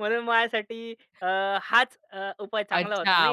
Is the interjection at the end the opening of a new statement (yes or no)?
yes